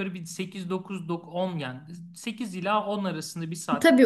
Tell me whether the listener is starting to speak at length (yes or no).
yes